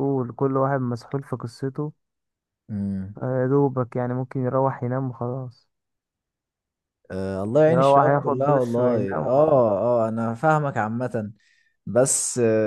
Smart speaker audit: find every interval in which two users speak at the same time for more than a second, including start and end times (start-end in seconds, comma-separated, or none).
7.7-9.6